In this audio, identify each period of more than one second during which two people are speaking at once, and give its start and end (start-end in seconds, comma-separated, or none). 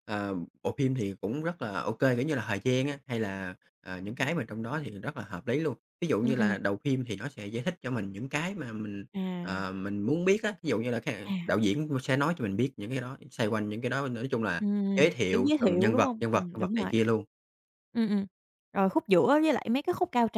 14.6-16.9